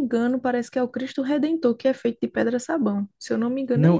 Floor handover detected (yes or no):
yes